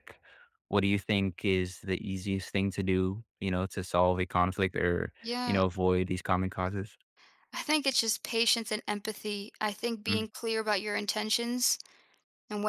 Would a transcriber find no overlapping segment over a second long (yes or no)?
yes